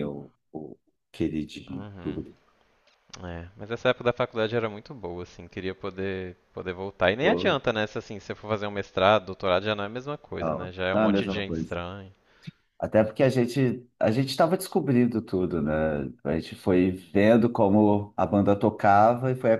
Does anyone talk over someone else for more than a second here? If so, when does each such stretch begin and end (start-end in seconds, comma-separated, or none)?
10.4-11.8